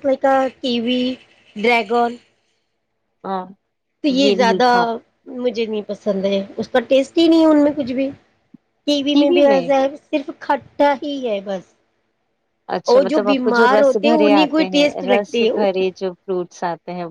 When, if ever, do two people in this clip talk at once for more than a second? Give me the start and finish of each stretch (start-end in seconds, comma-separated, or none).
12.9-15.5